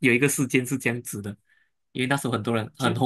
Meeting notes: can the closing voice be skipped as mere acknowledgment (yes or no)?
yes